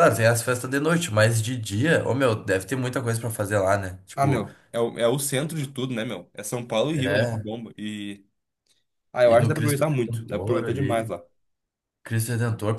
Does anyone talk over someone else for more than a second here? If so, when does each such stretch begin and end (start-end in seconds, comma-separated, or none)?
9.2-11.1